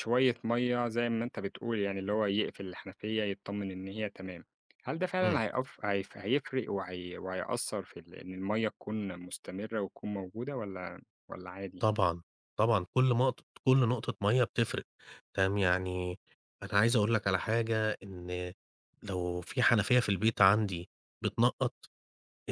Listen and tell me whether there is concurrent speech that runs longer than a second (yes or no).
no